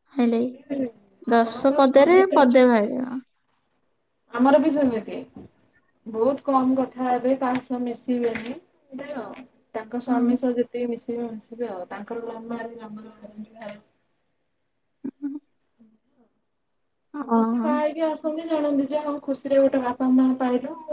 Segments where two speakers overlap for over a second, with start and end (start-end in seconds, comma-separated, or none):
1.4-2.9